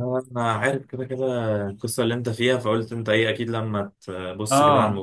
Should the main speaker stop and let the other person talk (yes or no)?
yes